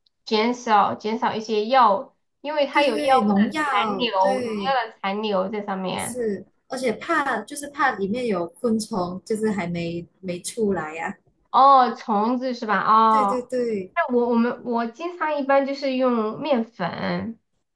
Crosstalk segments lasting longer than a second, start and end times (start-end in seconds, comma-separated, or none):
2.7-4.8